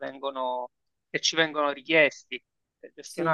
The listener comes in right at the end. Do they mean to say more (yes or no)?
no